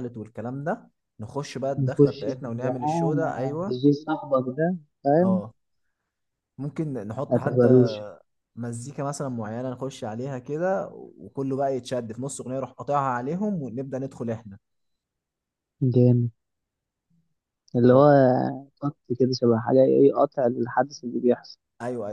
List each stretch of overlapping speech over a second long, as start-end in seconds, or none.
1.8-3.8